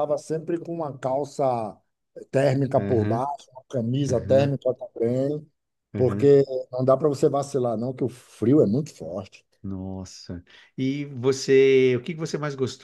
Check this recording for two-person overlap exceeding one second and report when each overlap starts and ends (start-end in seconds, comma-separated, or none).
none